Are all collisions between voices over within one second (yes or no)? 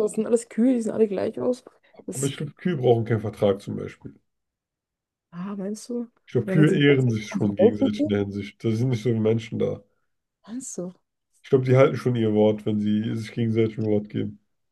no